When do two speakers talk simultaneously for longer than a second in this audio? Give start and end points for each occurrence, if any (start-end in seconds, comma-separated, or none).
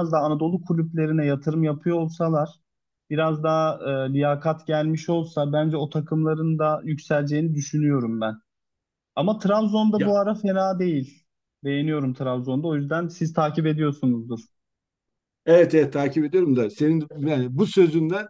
none